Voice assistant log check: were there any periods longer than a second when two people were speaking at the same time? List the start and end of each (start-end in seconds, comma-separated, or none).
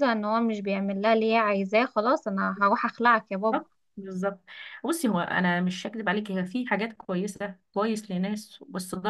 none